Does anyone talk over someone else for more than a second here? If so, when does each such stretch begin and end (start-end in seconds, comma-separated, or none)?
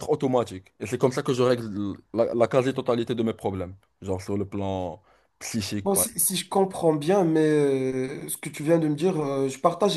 none